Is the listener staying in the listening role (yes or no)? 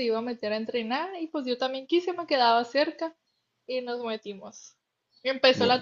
yes